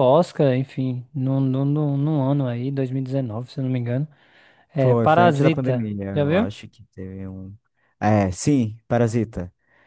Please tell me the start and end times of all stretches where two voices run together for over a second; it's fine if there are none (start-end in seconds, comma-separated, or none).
4.8-6.5